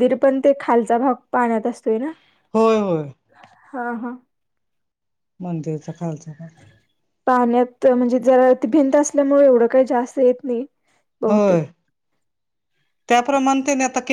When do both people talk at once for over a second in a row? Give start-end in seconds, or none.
none